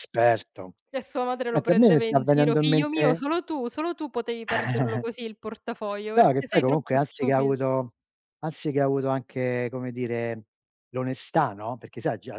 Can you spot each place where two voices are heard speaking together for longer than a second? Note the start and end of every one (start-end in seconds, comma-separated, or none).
1.5-3.2, 6.2-7.5